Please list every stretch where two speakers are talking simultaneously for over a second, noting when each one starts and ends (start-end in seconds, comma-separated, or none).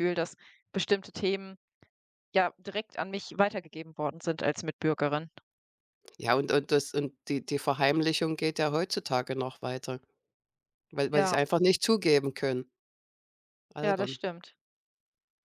none